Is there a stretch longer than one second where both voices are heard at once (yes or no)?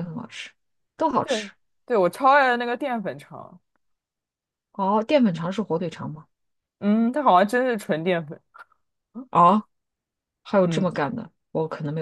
no